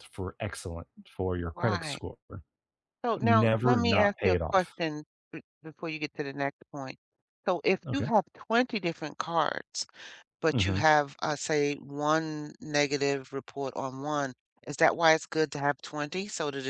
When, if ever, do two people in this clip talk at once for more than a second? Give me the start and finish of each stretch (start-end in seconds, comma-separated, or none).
3.2-4.7